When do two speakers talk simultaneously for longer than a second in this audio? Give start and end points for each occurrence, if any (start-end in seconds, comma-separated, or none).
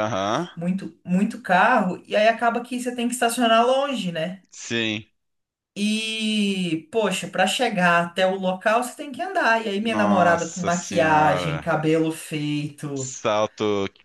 9.8-11.8